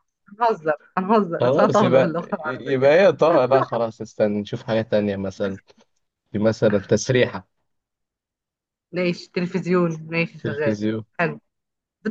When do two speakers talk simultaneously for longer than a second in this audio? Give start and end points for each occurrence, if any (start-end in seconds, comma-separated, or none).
1.4-2.9